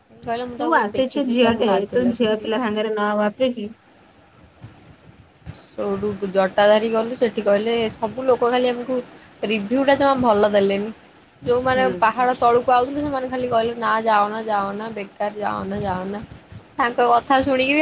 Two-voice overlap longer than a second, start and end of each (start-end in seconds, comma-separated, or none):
0.6-2.5